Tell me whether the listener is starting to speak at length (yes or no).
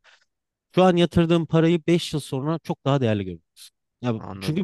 no